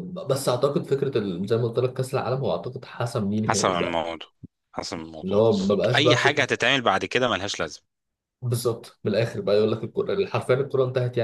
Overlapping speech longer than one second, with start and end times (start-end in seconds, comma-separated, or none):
5.2-6.5